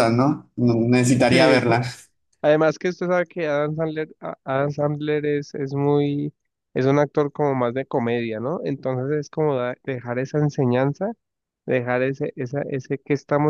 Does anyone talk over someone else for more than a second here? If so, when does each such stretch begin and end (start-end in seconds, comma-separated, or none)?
none